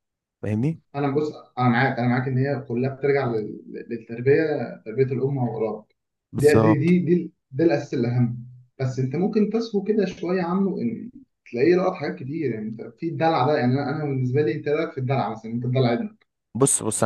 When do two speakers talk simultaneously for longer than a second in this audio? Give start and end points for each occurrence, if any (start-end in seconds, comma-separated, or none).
none